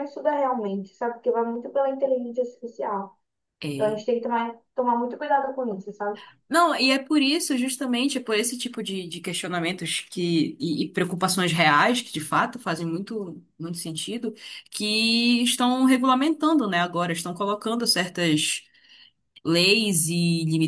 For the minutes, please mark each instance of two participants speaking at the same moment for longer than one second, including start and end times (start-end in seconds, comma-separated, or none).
none